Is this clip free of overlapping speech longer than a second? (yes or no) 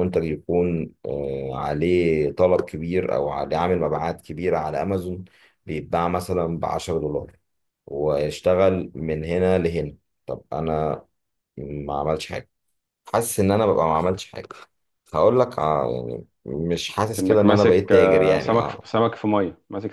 no